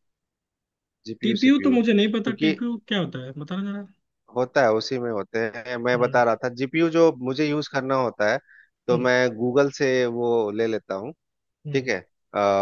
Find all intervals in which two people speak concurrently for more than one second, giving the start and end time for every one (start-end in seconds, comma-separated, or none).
1.2-2.5